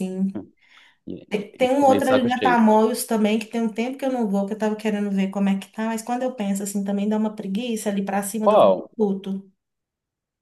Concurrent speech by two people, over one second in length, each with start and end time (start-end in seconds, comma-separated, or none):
1.3-2.6